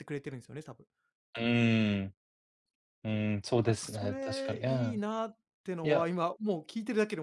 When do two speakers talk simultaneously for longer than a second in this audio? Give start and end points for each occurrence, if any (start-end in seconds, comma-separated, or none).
3.6-5.0